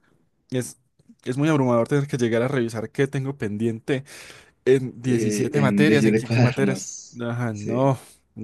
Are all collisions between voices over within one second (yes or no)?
no